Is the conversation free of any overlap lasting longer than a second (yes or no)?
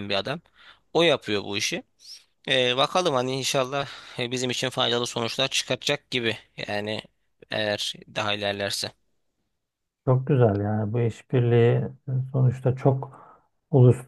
yes